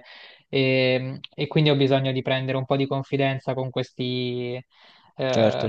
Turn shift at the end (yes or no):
no